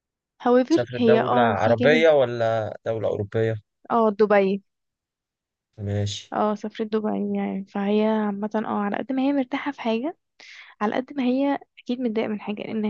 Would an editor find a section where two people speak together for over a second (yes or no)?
yes